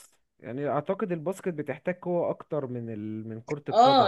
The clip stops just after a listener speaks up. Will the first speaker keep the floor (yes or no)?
no